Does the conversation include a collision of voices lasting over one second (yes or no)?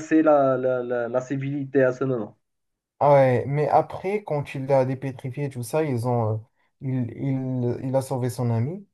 no